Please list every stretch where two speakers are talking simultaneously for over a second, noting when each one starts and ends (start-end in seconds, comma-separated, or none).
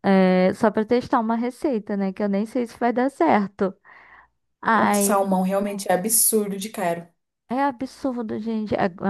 none